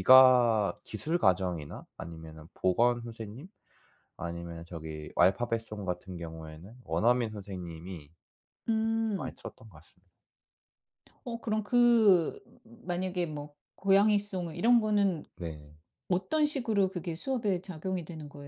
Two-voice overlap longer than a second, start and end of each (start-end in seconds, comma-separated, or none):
none